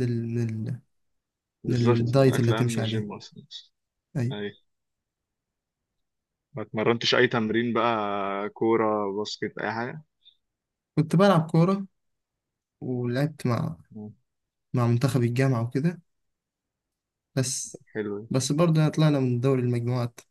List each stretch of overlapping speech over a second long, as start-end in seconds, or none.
1.7-3.1